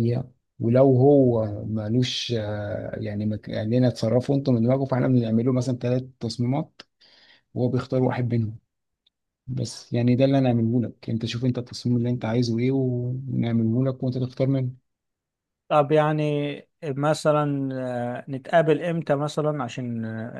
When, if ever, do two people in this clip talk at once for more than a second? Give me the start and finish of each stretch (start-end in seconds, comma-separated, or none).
none